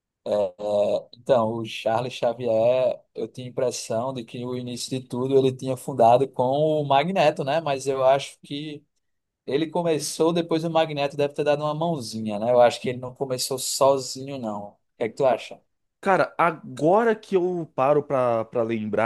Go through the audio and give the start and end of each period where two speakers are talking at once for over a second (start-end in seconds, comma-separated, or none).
none